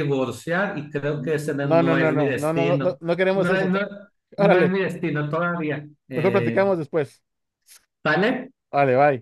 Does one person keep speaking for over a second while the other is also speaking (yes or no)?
yes